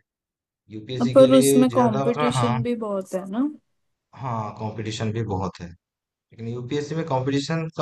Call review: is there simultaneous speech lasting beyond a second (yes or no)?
yes